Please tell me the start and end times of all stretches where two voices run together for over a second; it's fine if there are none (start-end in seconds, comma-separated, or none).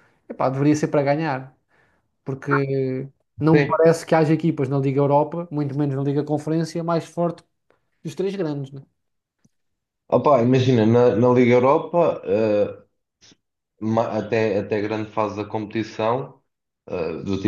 none